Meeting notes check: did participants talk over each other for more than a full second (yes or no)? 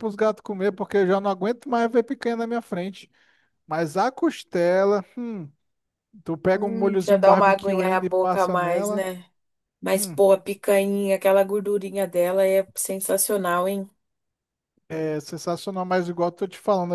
yes